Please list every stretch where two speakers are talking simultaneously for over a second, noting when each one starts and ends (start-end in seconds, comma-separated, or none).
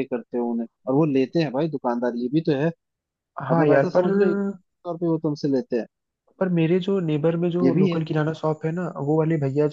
none